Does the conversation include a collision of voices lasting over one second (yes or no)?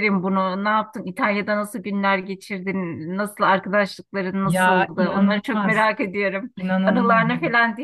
yes